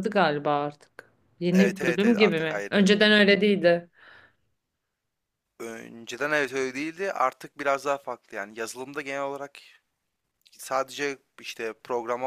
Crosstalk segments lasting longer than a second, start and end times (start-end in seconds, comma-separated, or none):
1.5-2.9